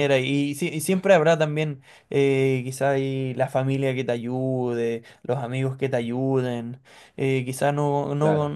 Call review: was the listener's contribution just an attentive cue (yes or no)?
yes